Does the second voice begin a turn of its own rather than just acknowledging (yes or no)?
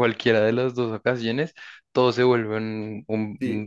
yes